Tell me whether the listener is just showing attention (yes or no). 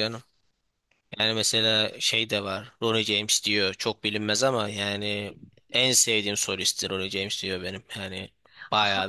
no